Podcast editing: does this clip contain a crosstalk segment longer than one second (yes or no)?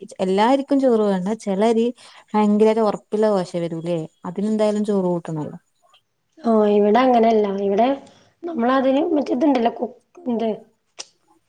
no